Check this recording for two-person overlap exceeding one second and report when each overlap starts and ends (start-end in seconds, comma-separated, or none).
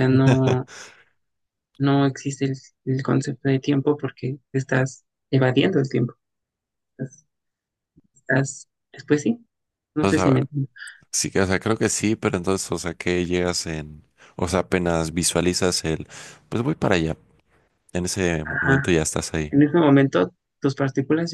none